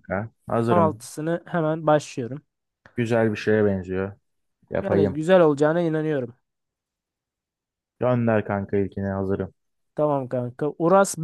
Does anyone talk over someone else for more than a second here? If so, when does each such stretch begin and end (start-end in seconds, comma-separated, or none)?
none